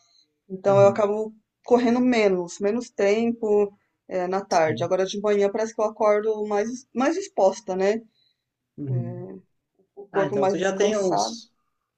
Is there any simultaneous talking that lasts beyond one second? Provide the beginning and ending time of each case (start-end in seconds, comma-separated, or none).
10.1-11.4